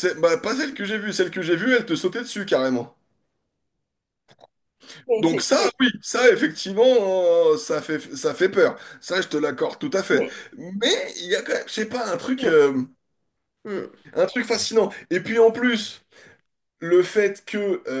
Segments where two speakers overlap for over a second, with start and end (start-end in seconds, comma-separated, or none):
none